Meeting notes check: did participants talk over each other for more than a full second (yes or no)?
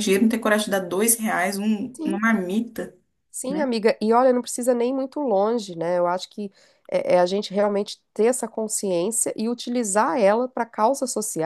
no